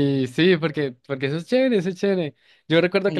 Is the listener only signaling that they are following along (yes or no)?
yes